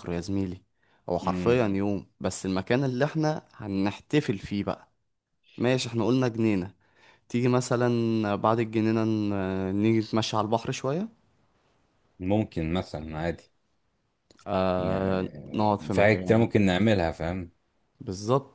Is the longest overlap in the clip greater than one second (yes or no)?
yes